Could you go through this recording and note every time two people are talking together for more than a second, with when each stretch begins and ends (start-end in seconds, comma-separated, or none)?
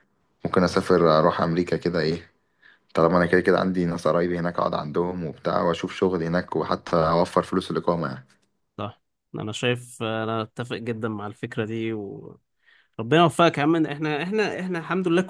none